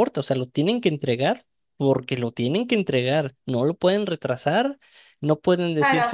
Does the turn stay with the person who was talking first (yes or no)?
no